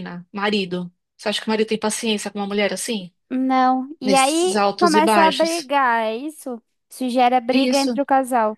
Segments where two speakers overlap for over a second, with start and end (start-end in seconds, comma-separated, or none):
4.0-5.7